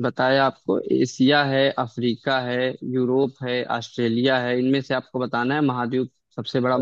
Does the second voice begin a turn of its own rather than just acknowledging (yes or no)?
yes